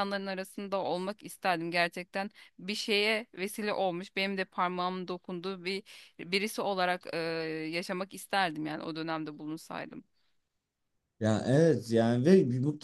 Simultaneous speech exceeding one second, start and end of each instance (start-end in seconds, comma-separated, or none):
none